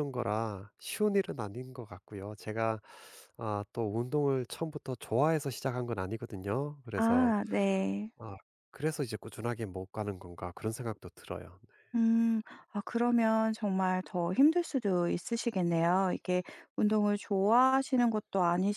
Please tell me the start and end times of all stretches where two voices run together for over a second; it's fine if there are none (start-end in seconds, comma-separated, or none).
none